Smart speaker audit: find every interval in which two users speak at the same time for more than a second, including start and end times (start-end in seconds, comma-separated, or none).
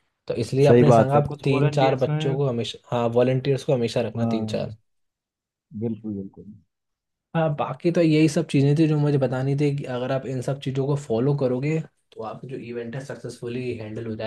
0.7-2.4